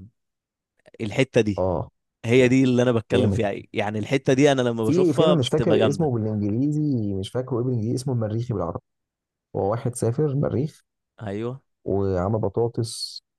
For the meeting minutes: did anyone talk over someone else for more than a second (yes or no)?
yes